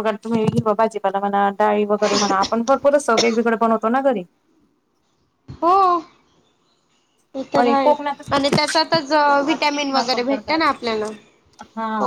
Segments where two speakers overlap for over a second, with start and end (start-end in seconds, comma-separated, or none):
8.7-10.8